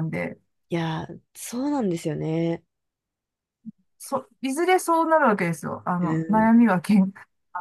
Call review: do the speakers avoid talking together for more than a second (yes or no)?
yes